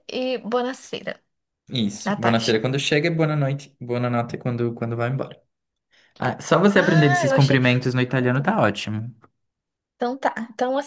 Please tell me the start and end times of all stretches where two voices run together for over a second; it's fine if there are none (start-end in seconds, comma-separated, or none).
6.8-8.6